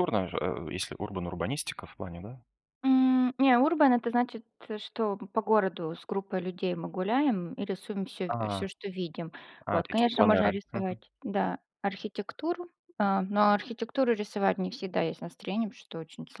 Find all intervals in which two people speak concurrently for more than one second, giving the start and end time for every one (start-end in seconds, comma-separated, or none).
9.7-11.0